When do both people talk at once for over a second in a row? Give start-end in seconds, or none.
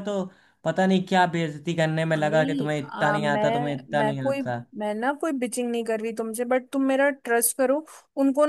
2.2-4.4